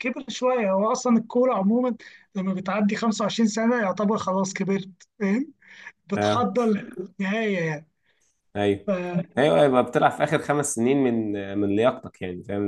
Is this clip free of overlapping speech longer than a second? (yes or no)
yes